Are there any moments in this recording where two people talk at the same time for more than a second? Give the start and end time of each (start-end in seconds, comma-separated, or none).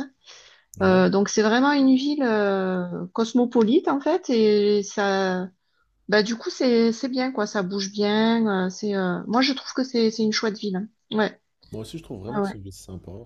none